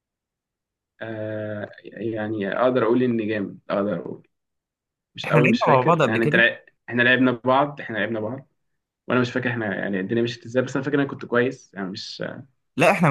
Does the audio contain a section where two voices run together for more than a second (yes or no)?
yes